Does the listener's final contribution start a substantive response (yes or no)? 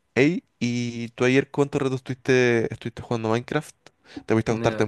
no